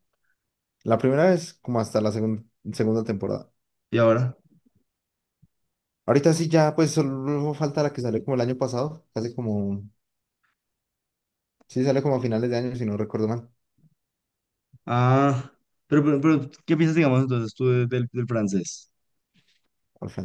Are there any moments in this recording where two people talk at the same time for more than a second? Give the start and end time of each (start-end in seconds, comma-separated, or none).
none